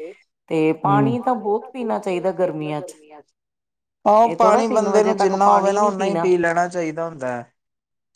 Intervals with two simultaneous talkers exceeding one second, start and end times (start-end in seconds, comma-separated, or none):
4.2-6.3